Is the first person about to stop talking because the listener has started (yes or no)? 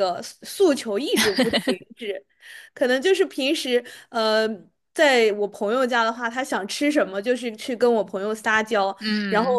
no